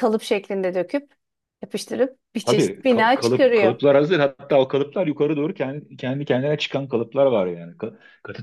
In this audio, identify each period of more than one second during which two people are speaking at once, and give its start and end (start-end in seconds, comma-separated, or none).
2.4-3.8